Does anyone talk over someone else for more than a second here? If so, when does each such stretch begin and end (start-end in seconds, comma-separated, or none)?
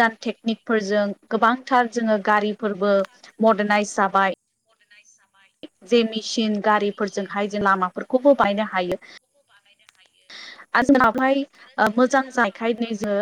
6.7-8.6